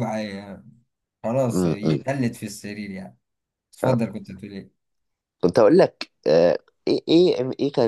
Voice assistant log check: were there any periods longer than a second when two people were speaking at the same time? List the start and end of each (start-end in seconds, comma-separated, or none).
none